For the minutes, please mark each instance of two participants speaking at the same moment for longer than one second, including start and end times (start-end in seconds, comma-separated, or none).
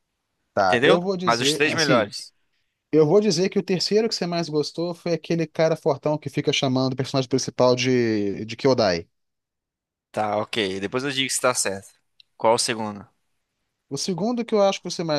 0.6-2.1